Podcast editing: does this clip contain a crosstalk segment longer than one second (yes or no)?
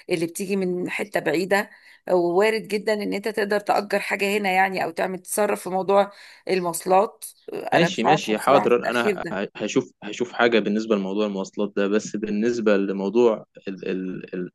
yes